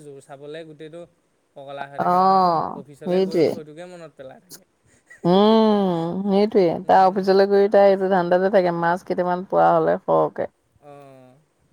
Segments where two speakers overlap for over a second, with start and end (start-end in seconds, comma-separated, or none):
2.0-3.5